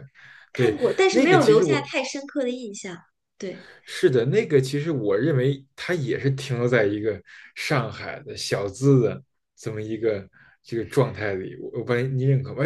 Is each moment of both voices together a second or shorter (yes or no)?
no